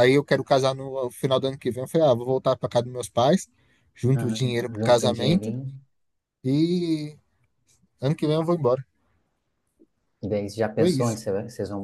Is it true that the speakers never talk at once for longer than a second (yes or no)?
no